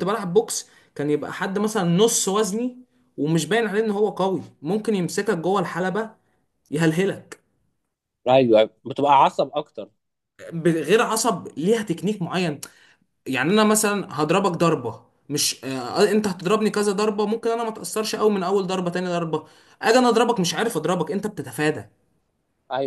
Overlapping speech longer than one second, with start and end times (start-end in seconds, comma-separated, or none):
none